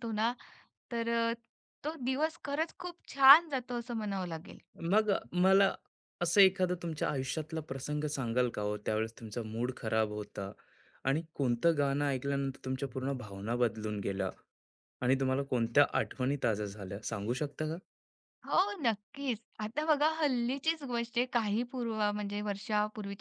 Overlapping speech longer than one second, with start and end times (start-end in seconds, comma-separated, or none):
none